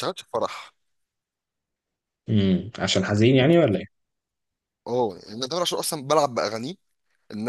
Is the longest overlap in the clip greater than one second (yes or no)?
no